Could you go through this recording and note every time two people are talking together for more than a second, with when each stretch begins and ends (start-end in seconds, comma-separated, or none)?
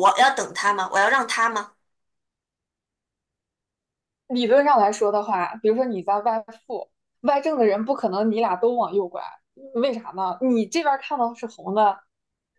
none